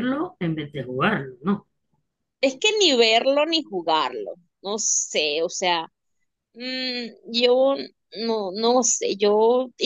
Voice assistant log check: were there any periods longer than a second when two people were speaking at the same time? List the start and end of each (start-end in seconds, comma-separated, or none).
none